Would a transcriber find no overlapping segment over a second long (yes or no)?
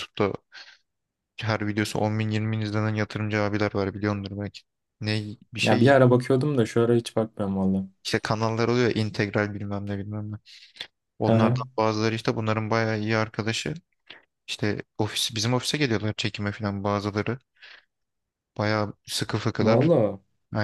yes